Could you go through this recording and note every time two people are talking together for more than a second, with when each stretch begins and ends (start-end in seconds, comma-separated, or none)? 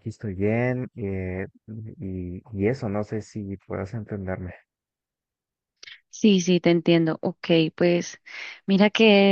none